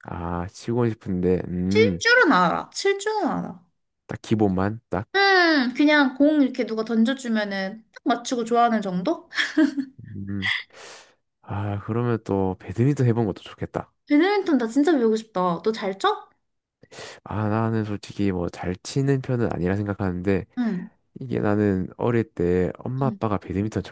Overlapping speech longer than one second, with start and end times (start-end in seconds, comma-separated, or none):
none